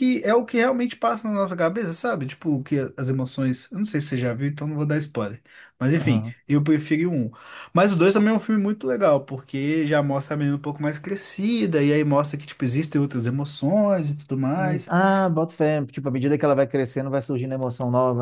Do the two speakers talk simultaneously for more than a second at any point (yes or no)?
no